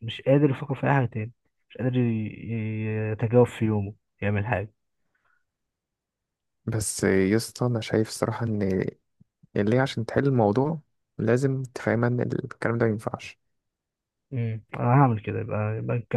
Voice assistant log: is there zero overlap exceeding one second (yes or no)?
yes